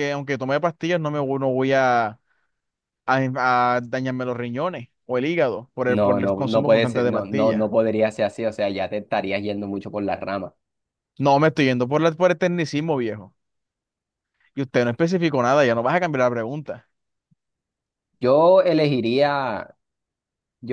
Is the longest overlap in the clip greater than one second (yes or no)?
yes